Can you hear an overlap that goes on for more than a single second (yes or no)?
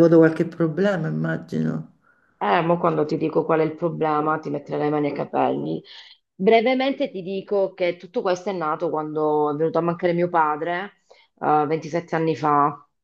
no